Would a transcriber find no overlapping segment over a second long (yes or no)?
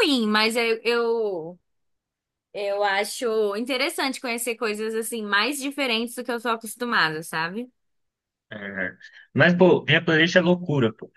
yes